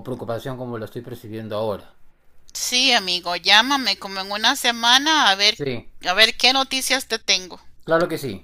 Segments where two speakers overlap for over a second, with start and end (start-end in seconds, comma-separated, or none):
none